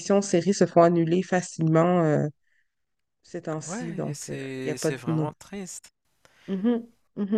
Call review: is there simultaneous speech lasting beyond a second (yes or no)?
yes